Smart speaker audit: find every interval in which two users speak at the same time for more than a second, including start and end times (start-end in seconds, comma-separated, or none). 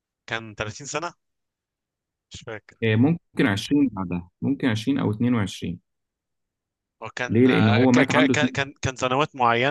7.3-8.6